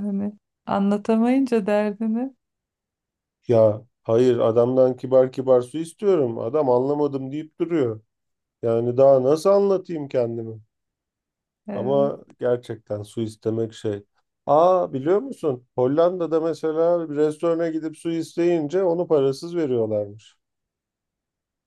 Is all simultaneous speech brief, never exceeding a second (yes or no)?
yes